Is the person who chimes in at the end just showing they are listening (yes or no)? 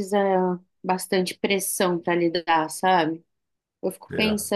yes